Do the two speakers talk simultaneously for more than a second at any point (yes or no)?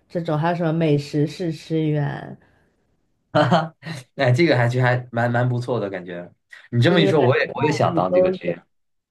yes